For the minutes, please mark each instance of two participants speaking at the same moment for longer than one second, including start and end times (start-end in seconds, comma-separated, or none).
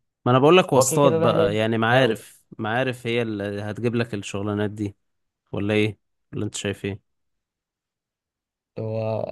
0.8-2.2